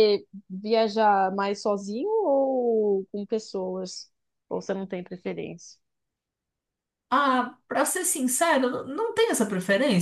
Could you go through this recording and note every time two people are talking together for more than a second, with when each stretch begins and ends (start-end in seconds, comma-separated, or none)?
none